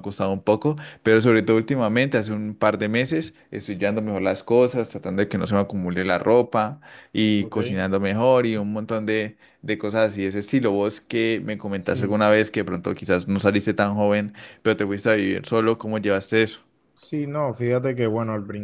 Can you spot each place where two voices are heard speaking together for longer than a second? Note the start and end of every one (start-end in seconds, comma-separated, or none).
none